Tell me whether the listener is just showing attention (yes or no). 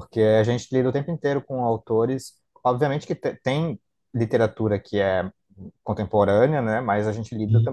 yes